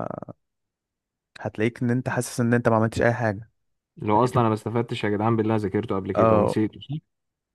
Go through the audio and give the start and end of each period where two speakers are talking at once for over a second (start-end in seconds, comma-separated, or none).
none